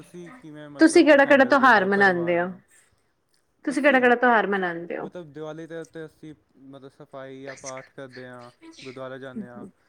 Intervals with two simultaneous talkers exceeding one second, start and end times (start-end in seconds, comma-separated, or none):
0.8-2.5